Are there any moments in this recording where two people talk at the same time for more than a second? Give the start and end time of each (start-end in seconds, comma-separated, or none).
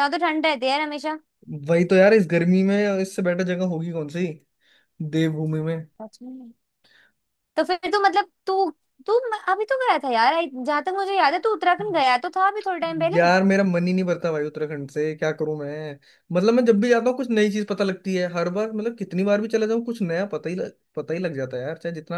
none